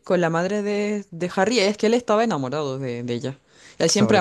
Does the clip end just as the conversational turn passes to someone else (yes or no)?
no